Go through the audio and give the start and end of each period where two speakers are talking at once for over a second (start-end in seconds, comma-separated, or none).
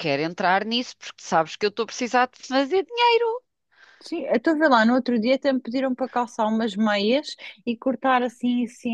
none